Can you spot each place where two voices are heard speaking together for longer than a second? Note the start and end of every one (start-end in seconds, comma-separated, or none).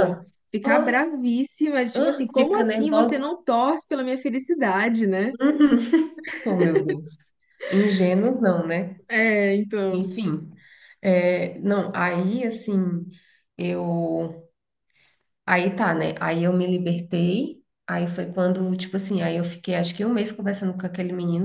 1.9-3.3